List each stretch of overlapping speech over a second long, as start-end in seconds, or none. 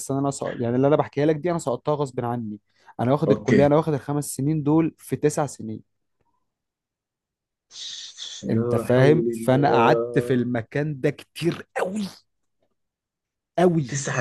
8.5-10.5